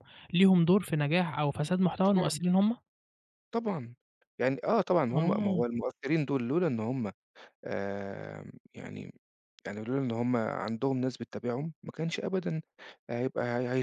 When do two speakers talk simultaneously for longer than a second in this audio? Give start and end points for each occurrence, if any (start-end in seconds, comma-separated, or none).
none